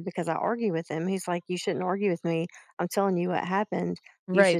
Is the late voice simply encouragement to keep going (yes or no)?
no